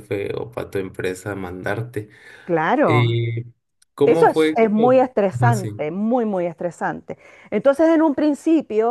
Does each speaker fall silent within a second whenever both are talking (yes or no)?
no